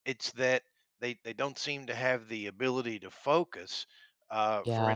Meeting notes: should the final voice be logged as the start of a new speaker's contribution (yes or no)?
no